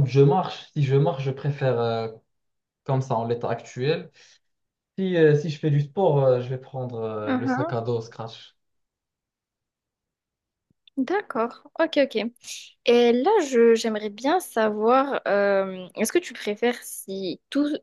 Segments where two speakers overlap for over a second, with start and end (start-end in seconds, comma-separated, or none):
none